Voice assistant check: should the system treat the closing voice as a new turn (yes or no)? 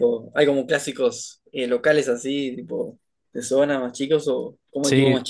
yes